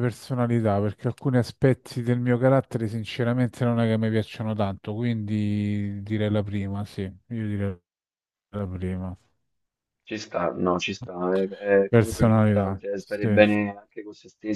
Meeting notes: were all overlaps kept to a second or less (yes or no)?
no